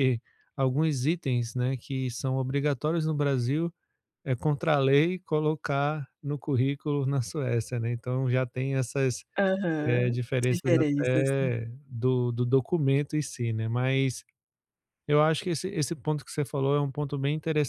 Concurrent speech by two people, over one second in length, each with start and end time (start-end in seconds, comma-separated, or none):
9.8-11.3